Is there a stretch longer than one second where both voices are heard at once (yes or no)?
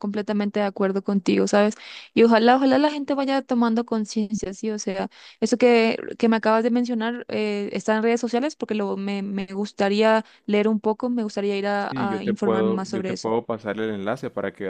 yes